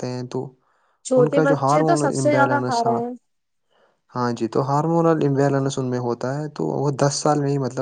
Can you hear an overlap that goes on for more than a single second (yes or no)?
yes